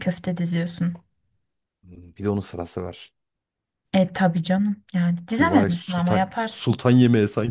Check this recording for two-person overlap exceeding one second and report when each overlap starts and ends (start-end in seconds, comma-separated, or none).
5.4-6.8